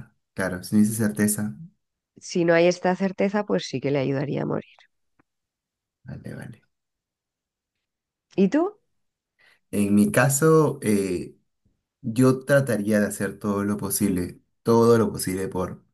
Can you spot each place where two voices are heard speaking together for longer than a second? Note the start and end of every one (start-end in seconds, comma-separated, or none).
none